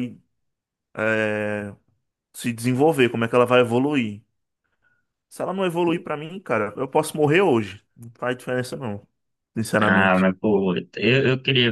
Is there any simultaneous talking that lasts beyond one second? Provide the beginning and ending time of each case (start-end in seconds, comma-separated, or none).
none